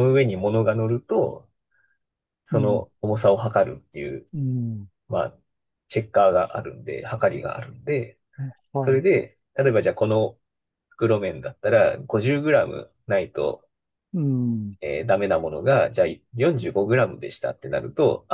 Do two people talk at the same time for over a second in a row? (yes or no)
no